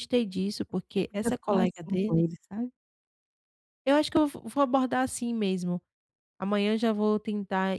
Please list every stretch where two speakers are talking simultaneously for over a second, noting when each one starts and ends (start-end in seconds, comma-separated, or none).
0.9-2.3